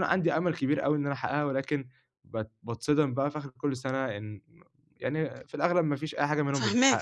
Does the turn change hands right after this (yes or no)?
yes